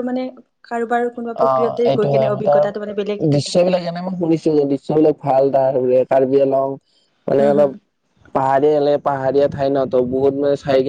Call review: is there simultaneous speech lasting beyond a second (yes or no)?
yes